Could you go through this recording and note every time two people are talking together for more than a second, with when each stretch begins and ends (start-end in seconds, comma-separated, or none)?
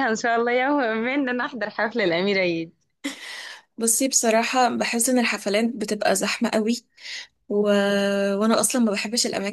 none